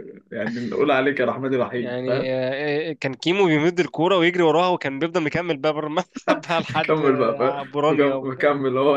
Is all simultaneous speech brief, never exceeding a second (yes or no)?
no